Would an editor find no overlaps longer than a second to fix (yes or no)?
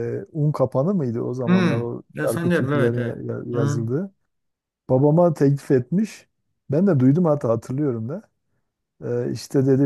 no